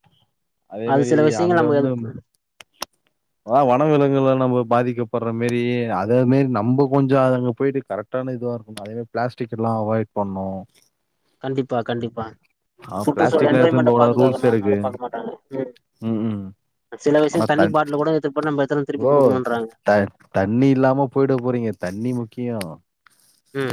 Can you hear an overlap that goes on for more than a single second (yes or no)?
yes